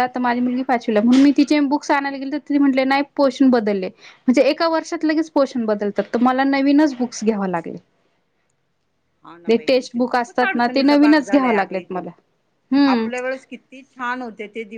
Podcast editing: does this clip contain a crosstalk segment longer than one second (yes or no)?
yes